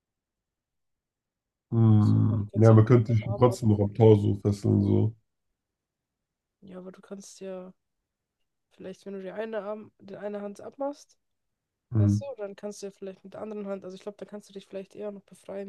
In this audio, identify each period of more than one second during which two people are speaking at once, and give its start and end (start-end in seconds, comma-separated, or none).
1.9-3.6